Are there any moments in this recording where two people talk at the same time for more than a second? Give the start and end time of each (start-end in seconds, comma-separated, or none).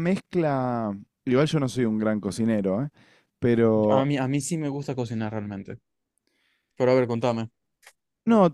none